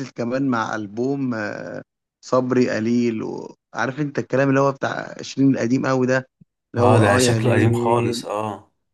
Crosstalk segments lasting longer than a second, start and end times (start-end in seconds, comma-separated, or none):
6.8-8.2